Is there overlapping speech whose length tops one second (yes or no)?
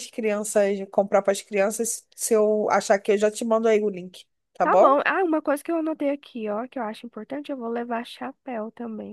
no